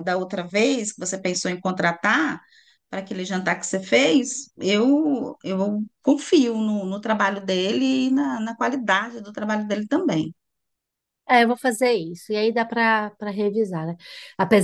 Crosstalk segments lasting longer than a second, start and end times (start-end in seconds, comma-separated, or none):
none